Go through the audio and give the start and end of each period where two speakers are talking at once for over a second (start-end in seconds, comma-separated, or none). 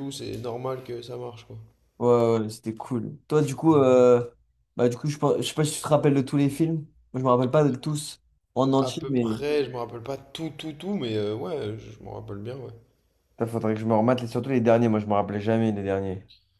none